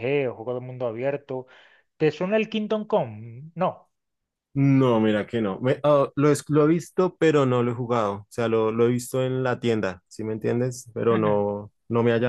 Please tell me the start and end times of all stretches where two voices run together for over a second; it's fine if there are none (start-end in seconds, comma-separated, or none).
none